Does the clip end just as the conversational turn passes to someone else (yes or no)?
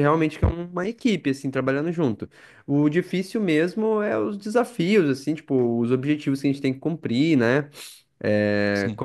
no